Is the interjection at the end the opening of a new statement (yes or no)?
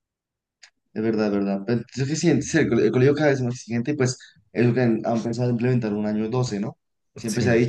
no